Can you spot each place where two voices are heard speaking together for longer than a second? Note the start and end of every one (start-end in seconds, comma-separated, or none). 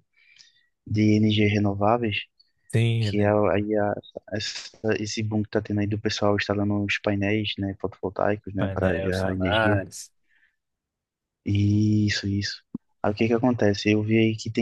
8.6-9.8